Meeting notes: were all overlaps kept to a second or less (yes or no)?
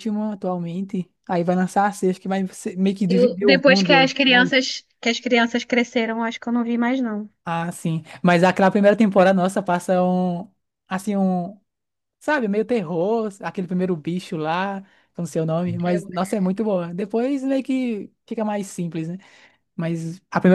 no